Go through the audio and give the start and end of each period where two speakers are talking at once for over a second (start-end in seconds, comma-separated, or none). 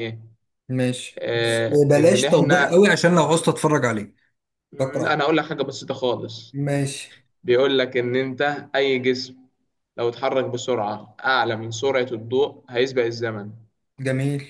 1.2-2.7